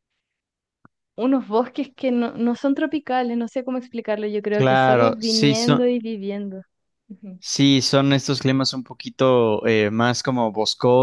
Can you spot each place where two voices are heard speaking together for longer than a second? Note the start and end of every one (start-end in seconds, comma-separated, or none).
4.6-5.8